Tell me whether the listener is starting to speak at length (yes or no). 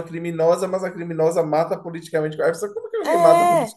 yes